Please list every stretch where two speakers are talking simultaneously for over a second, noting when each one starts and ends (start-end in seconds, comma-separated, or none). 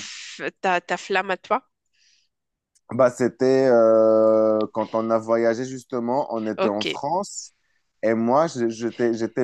none